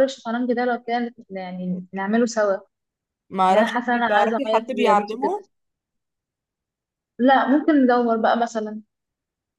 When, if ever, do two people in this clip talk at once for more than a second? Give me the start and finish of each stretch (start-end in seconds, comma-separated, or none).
3.5-5.3